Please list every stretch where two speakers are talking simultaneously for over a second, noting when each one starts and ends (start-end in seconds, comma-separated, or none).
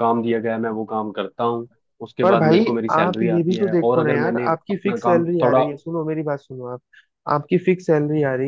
2.2-5.6